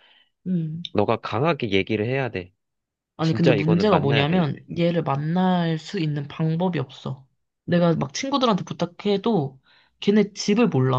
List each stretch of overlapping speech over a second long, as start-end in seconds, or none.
3.2-4.4